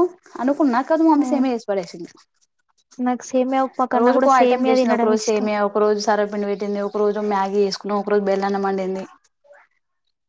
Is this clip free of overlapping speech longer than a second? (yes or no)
yes